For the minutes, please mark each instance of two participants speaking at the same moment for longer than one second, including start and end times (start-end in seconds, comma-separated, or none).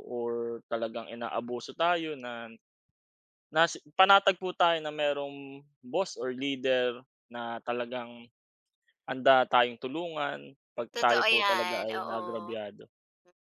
10.9-12.6